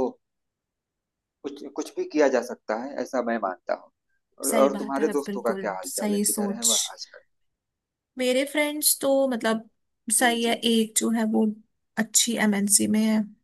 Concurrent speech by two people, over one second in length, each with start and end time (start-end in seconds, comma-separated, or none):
4.4-6.7